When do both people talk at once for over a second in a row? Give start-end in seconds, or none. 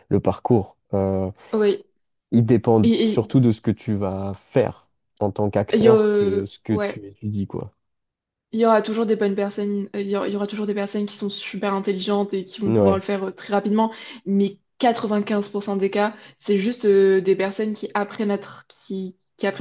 5.7-7.0